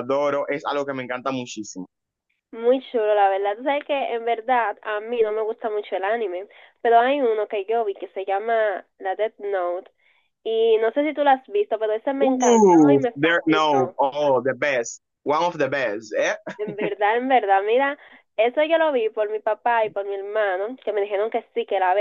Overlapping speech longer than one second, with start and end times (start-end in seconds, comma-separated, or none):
12.2-13.9